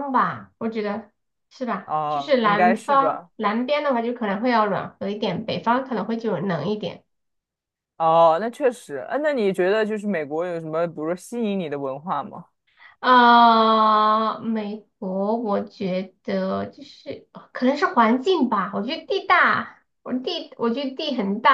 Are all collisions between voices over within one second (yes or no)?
no